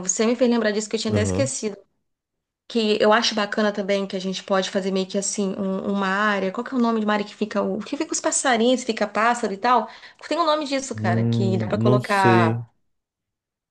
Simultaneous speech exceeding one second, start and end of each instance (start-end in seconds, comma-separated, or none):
10.9-12.6